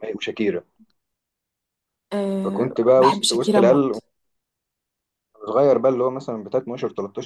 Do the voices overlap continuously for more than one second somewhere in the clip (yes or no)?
yes